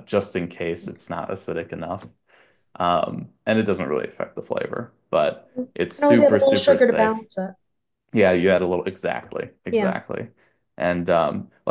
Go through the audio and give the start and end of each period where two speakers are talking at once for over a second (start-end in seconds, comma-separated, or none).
5.5-7.3